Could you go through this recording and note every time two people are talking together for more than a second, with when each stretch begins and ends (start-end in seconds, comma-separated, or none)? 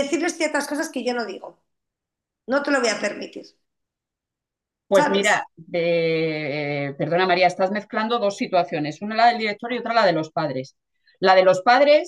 none